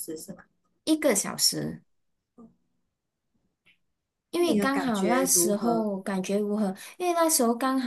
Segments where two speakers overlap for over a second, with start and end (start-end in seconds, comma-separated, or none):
4.4-5.9